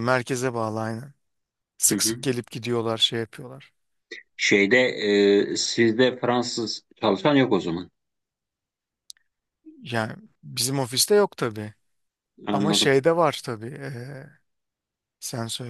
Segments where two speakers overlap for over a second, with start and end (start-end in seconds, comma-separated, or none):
none